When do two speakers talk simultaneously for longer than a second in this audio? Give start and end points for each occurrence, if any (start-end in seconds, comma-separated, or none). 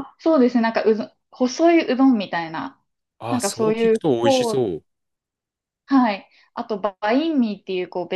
3.3-4.6